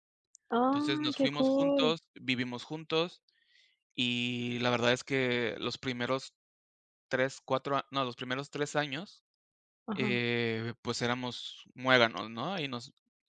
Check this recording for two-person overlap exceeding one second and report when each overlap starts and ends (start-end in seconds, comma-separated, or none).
0.7-1.9